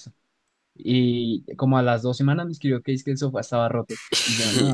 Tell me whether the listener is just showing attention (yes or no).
no